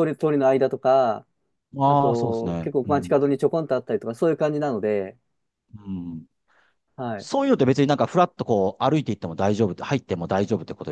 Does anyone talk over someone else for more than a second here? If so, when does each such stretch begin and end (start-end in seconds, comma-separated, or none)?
1.9-3.2